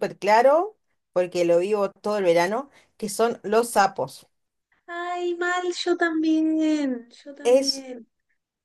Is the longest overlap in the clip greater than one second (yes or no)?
no